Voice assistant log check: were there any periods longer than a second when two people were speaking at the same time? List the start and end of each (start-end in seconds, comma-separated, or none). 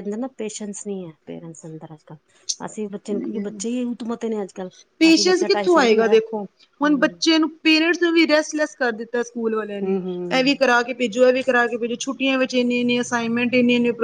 none